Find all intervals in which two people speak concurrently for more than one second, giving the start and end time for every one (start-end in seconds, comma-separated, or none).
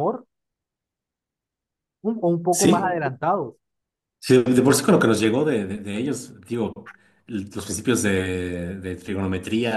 none